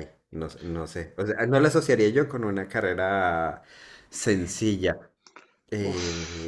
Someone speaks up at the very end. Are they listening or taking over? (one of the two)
taking over